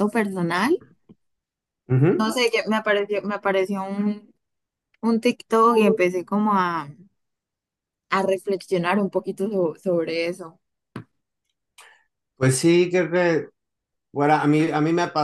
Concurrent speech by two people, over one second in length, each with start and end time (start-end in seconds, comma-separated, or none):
none